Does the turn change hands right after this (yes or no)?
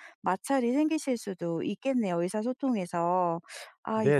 yes